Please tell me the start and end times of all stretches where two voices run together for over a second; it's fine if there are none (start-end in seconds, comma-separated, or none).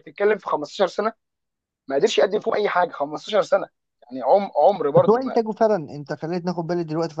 none